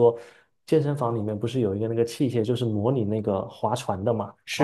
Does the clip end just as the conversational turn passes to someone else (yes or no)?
yes